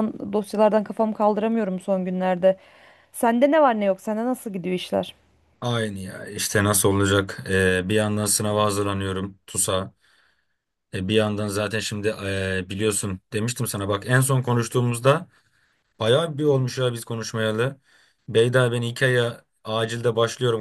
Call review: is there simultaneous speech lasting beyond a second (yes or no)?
no